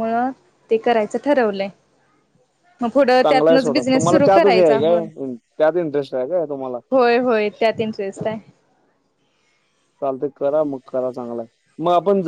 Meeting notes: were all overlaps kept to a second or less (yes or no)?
no